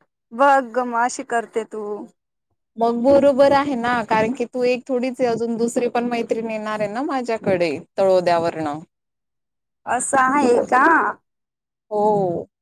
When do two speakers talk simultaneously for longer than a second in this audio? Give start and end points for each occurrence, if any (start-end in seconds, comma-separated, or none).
none